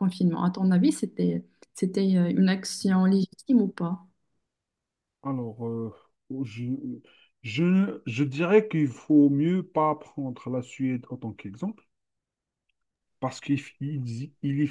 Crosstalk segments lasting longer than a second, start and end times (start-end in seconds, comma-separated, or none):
none